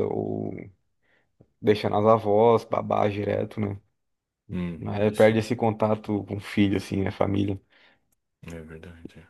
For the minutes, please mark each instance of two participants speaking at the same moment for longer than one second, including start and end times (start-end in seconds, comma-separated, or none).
none